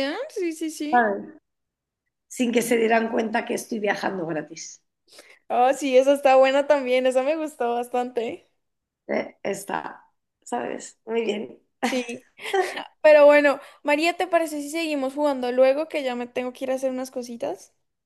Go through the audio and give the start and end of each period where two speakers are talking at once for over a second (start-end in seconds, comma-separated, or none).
none